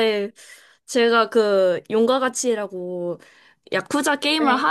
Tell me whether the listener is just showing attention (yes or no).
yes